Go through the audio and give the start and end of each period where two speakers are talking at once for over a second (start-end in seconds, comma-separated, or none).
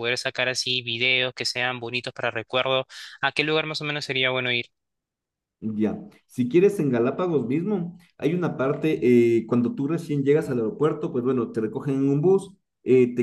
none